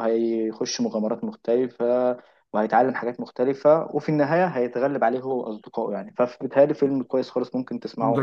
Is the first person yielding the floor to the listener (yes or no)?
yes